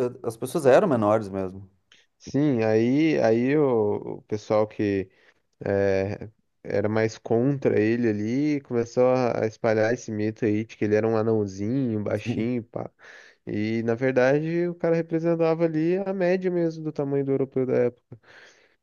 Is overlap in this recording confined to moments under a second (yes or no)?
yes